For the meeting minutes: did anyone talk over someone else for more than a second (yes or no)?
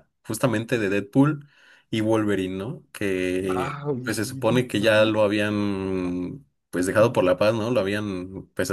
yes